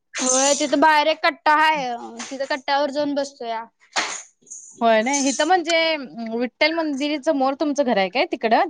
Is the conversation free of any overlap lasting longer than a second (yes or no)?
yes